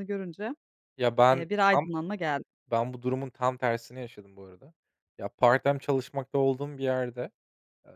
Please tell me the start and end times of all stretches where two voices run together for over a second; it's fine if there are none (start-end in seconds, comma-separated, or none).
none